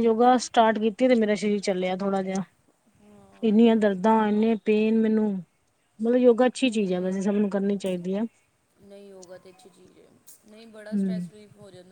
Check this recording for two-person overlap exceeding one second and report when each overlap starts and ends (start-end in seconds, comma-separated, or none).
none